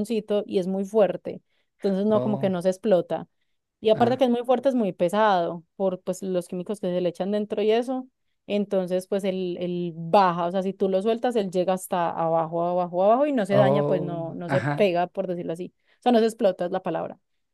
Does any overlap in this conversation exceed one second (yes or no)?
yes